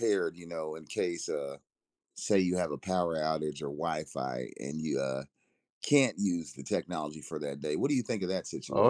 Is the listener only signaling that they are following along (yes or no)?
no